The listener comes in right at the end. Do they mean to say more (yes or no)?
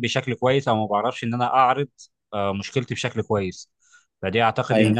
no